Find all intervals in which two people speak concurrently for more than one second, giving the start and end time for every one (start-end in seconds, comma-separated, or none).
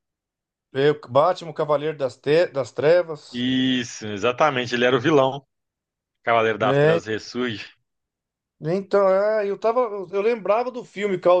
none